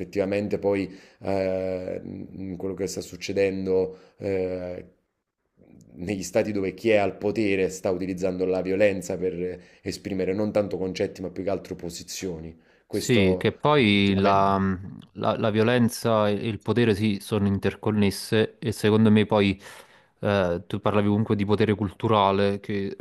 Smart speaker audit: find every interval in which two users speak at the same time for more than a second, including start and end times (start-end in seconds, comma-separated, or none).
12.9-14.5